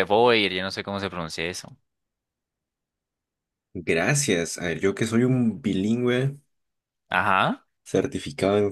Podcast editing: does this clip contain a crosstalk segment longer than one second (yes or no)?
no